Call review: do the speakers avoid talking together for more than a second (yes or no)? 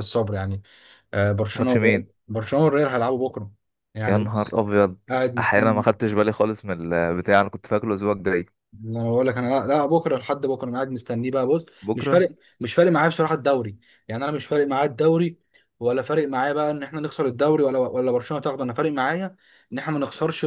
yes